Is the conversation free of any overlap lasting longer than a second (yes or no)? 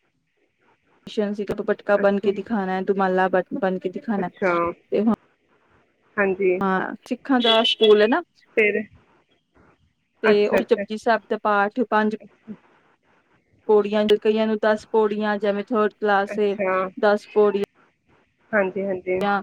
yes